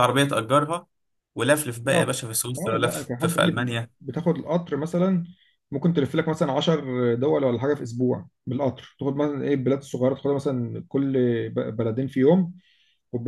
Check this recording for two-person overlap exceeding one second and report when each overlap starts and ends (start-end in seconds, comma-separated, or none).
1.9-3.9